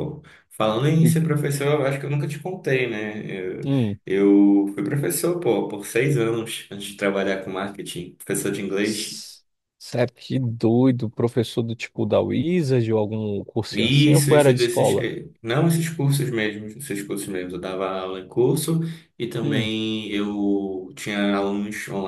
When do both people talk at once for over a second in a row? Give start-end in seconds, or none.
13.7-15.2